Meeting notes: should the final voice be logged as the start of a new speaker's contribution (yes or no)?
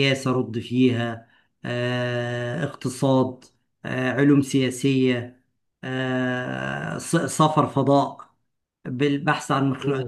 no